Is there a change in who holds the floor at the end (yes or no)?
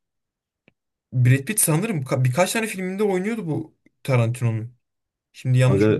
yes